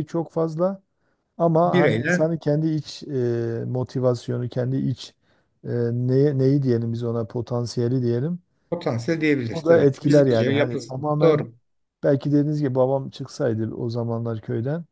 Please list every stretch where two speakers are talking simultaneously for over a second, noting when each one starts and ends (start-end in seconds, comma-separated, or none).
9.5-11.5